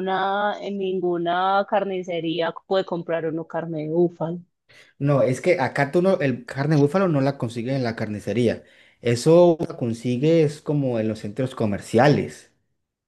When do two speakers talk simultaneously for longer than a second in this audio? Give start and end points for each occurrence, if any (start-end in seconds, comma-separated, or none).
none